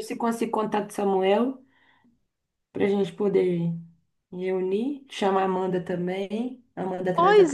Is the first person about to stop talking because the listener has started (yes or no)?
yes